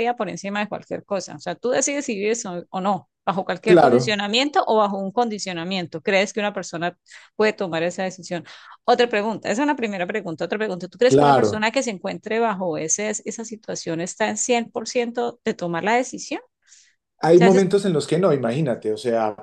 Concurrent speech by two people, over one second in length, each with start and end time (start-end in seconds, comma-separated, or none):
none